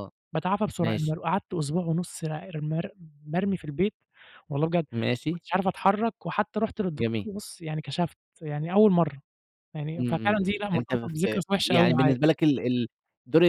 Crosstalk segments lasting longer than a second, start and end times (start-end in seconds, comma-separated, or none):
9.9-12.1